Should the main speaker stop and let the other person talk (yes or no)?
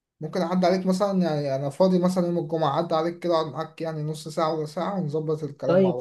yes